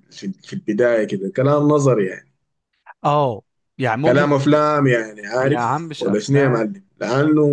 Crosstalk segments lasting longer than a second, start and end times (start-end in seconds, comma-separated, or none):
5.4-6.6